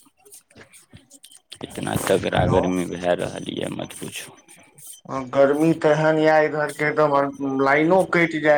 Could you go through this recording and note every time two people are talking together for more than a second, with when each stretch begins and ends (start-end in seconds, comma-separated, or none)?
none